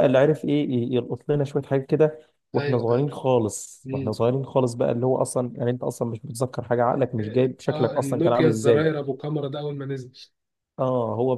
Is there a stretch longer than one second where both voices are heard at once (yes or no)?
yes